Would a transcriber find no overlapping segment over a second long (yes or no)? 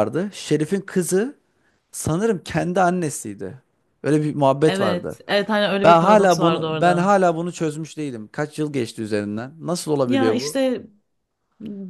no